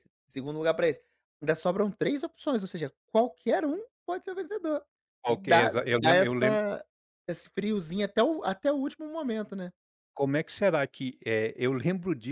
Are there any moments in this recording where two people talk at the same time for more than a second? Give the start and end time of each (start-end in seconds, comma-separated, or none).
5.3-6.6